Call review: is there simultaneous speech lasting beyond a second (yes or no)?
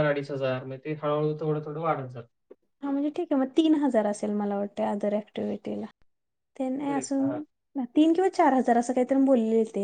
no